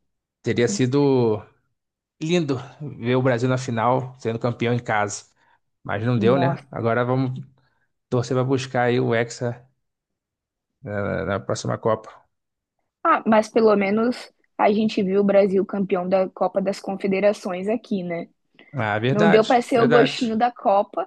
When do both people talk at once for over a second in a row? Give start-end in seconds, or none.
19.1-20.3